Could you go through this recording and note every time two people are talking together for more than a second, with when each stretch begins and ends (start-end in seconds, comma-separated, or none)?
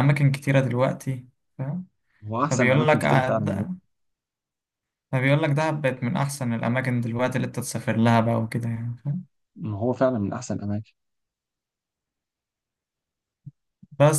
2.5-3.7